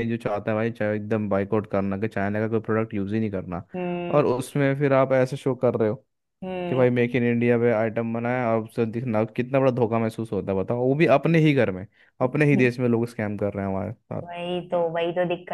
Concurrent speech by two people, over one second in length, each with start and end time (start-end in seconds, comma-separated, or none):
none